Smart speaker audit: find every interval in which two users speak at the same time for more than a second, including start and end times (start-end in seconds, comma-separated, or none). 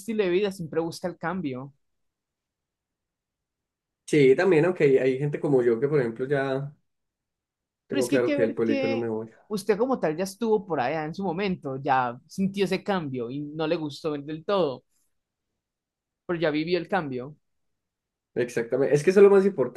7.9-9.1